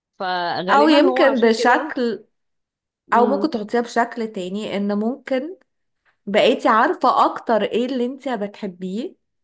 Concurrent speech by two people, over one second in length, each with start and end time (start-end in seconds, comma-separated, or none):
0.7-2.0